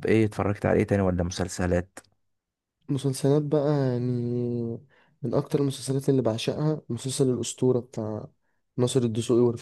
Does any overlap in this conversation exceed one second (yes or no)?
no